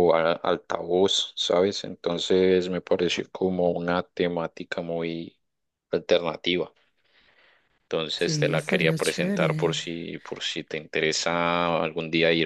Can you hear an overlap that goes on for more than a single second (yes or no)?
yes